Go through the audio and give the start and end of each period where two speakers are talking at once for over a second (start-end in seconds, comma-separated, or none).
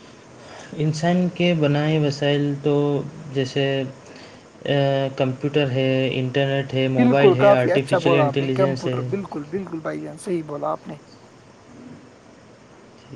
7.0-9.0